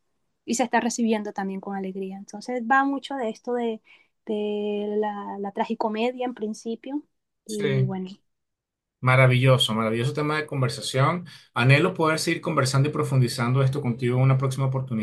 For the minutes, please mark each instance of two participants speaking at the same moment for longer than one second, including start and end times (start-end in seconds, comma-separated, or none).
none